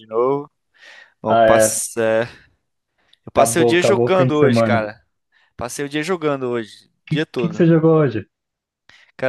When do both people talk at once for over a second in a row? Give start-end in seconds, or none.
3.3-4.9